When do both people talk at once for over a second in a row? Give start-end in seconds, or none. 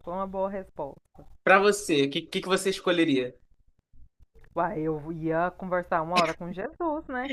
none